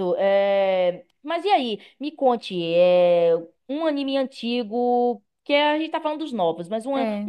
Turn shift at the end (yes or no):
no